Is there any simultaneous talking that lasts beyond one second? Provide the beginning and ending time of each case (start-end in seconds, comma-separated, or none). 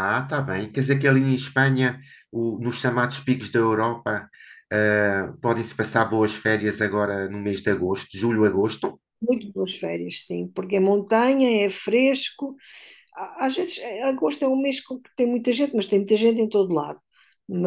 none